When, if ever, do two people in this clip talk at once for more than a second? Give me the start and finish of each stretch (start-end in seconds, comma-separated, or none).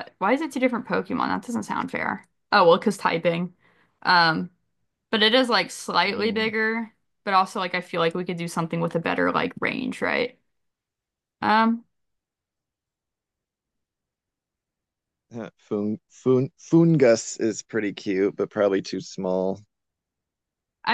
none